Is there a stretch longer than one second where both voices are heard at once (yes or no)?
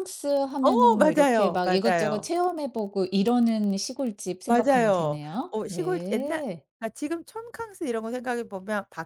yes